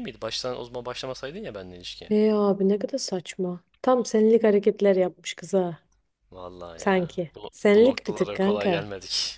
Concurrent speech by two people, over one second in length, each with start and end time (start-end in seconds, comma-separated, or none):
6.8-8.9